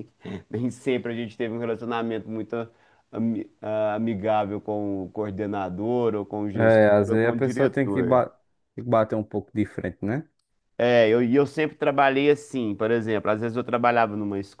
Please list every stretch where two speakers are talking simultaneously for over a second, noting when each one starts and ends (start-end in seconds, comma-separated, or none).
6.6-8.2